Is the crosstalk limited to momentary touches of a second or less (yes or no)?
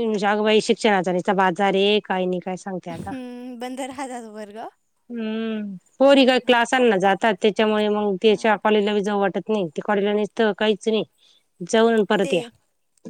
yes